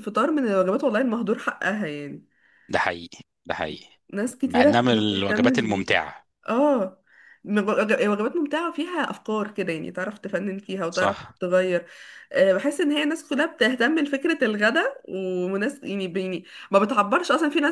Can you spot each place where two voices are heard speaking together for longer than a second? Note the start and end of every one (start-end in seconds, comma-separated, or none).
4.5-6.0